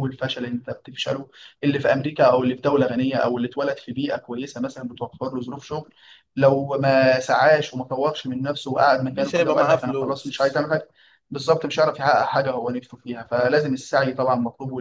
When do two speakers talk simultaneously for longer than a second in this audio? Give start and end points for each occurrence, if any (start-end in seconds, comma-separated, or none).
9.1-10.6